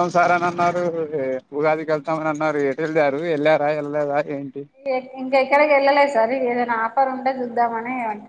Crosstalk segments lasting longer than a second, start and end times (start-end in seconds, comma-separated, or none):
none